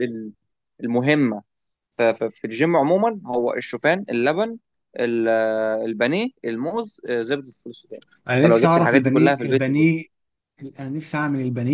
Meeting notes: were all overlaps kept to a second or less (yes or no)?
no